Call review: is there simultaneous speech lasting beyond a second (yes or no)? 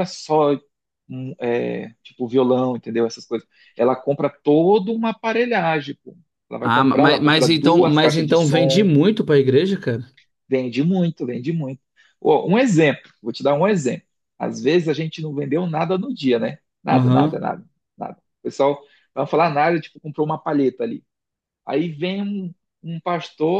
yes